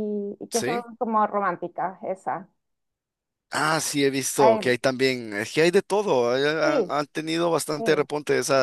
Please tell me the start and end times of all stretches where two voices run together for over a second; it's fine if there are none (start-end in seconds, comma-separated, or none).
none